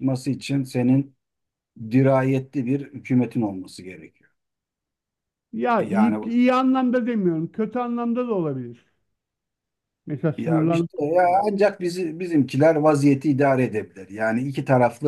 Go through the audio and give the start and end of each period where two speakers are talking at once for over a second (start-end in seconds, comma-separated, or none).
none